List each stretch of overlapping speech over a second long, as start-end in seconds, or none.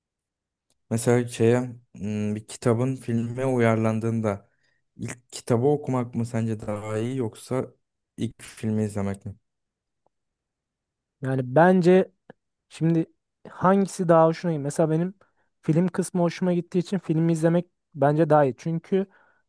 none